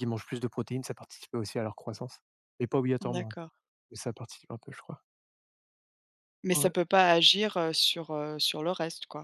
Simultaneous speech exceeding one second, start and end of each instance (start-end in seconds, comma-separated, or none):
none